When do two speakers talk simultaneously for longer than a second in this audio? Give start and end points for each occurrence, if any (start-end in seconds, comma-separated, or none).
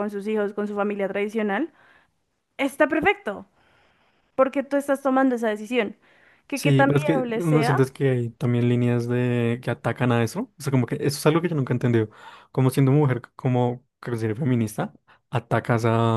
6.5-7.8